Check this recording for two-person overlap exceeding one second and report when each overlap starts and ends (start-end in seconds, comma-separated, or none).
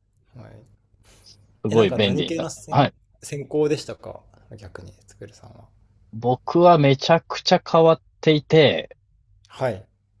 1.7-2.9